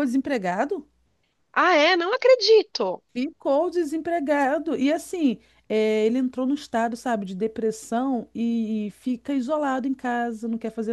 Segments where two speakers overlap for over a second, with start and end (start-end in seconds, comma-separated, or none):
none